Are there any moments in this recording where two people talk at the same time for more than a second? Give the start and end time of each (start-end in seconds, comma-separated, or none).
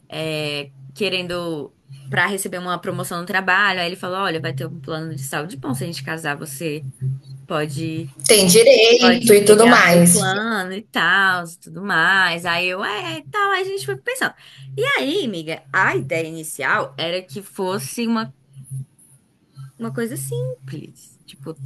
9.0-10.3